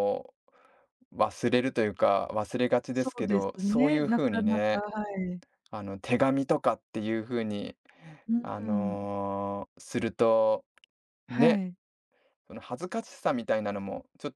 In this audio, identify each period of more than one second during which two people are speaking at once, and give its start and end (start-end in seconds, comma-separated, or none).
2.9-4.8